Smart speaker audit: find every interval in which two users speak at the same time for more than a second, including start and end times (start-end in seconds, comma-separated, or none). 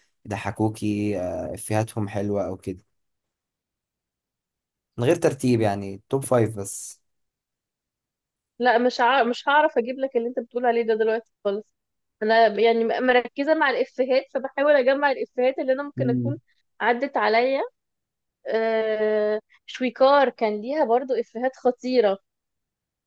none